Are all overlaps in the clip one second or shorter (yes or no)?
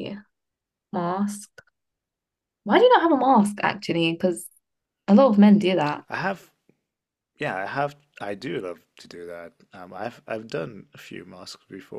yes